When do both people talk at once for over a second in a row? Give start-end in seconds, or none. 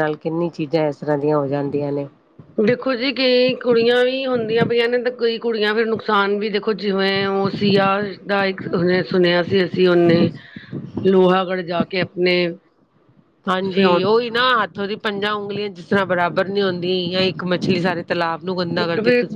none